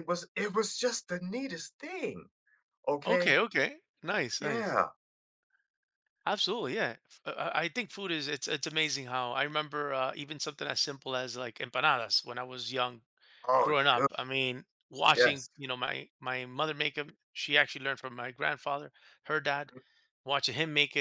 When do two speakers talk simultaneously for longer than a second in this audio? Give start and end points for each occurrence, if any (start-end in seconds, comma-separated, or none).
none